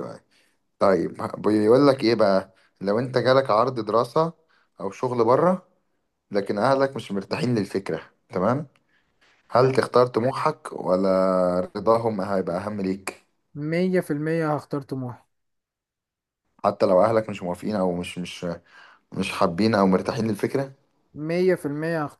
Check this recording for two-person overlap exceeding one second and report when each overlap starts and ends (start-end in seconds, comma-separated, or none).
none